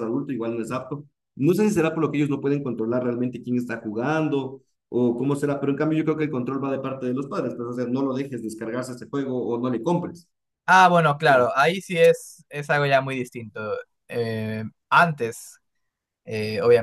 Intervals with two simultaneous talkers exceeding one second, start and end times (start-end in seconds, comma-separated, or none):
none